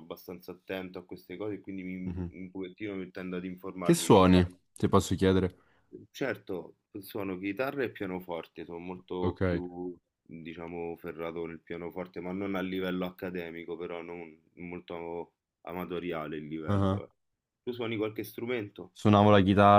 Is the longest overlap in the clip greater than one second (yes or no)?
no